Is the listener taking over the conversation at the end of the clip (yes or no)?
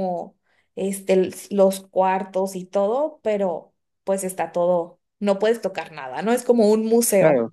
yes